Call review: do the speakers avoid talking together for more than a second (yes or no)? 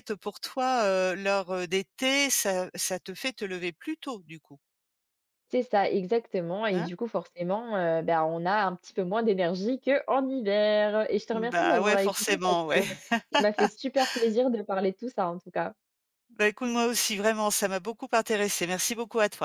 no